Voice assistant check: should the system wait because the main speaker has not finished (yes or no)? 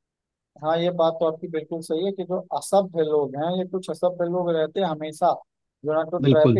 yes